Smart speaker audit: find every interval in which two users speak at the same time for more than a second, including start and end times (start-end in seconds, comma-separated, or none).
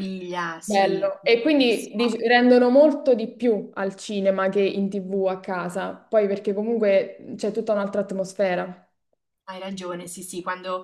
0.6-2.0